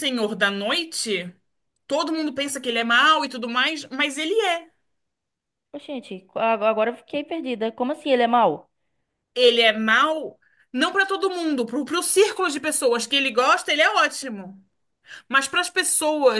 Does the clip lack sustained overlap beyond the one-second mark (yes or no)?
yes